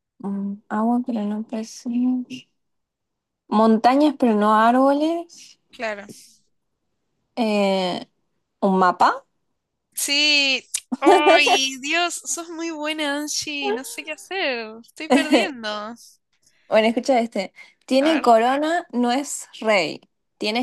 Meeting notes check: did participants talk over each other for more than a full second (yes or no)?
no